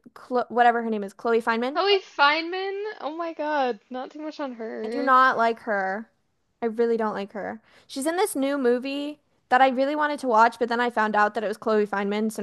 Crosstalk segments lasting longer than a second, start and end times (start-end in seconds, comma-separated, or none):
none